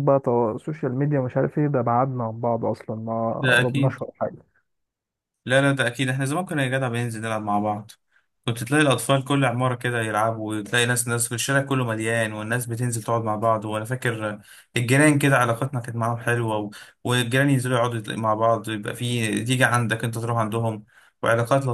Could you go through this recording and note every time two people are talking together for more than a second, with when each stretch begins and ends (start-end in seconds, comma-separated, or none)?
none